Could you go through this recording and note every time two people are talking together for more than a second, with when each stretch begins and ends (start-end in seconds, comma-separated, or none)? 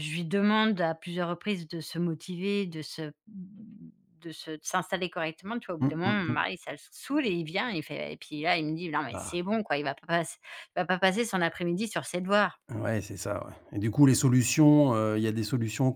none